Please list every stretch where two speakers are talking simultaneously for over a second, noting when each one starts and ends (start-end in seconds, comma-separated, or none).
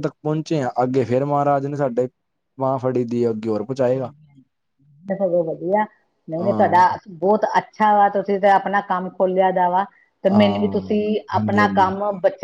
10.3-11.9